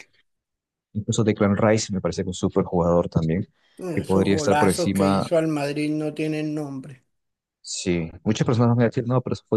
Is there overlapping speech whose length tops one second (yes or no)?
yes